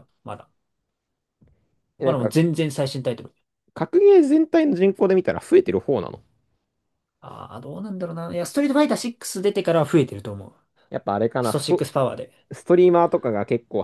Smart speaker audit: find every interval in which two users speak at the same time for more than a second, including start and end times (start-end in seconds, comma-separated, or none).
none